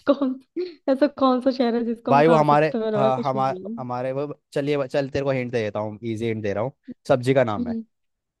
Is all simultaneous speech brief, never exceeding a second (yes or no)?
no